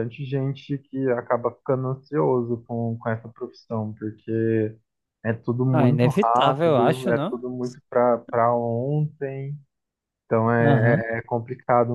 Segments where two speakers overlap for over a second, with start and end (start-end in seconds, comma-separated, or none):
5.7-7.5